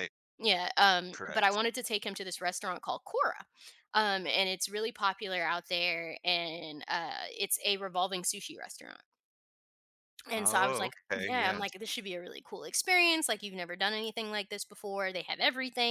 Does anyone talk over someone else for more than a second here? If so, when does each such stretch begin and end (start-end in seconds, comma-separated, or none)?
10.3-11.7